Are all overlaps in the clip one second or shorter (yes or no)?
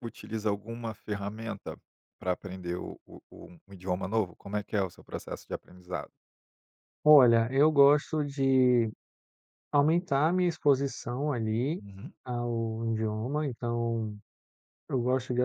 yes